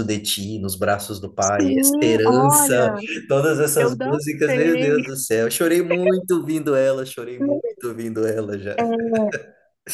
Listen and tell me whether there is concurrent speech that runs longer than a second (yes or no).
yes